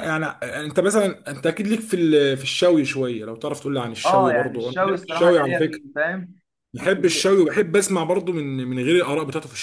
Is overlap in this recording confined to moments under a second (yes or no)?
no